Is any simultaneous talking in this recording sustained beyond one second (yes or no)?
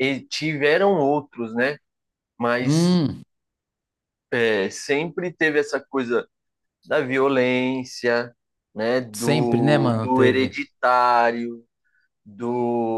yes